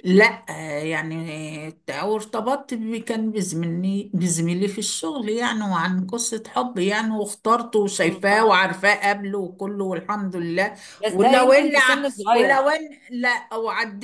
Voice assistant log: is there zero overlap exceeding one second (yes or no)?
no